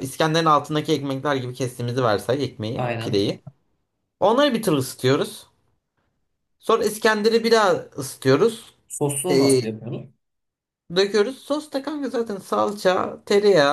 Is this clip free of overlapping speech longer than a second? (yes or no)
yes